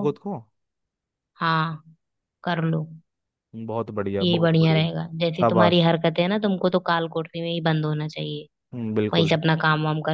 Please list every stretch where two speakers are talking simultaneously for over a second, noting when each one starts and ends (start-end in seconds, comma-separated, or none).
4.2-5.9